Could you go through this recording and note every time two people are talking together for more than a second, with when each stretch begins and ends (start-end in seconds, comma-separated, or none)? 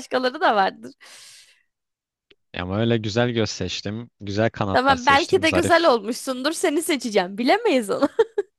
4.7-5.9